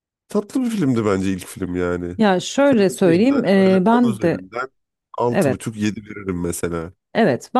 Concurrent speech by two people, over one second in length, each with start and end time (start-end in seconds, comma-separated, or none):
3.0-4.5